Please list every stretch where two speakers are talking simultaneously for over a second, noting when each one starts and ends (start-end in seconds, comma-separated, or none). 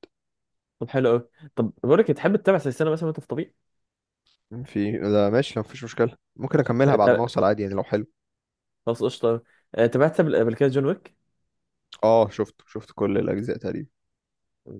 none